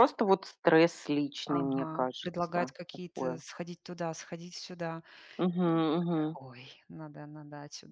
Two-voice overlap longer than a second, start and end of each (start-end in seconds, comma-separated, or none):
1.5-3.4